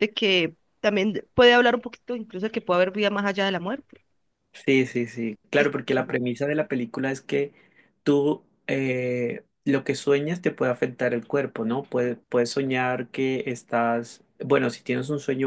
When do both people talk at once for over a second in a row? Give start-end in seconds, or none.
none